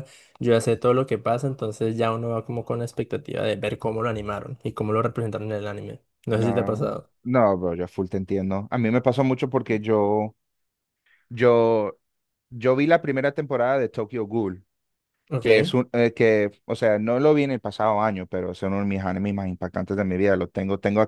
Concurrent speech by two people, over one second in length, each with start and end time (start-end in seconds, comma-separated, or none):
none